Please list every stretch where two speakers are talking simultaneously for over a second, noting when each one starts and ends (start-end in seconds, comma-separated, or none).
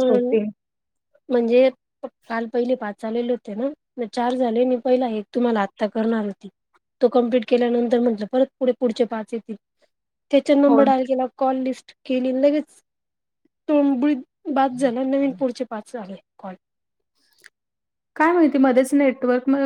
none